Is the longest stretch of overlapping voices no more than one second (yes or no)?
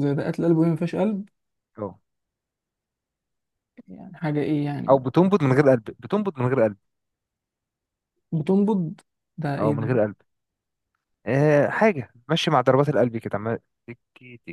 yes